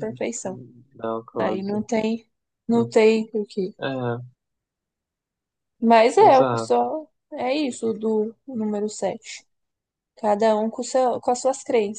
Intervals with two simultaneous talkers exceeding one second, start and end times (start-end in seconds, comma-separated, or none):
none